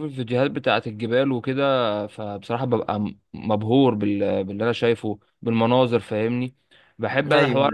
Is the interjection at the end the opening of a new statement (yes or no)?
no